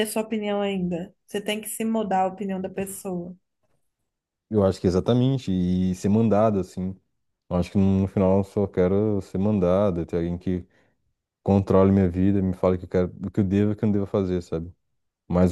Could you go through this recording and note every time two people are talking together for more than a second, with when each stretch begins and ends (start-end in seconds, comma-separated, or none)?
none